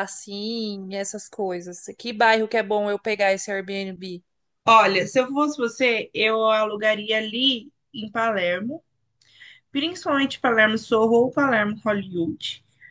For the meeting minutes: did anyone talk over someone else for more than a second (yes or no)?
no